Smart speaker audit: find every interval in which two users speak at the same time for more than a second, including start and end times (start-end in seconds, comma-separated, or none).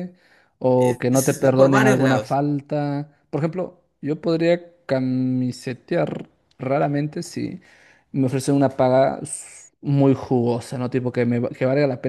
0.8-2.4